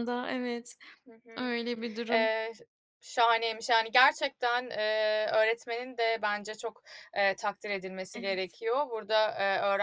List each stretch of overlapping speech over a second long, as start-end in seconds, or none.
none